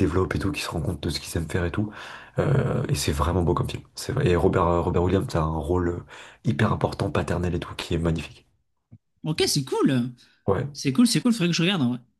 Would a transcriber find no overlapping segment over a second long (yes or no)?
yes